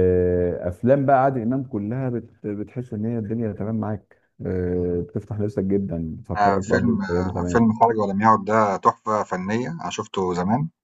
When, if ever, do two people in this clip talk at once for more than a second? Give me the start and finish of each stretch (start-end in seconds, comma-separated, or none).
6.4-7.7